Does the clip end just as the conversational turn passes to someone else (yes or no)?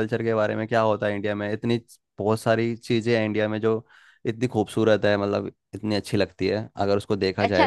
yes